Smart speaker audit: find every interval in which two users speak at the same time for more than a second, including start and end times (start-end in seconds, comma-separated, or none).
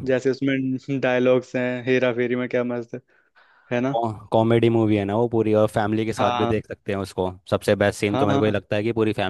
none